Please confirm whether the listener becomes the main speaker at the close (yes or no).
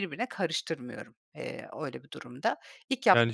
yes